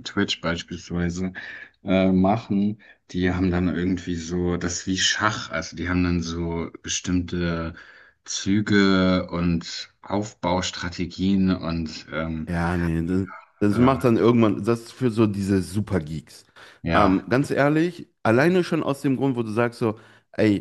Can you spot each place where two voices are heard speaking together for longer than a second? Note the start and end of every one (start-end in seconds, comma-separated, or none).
none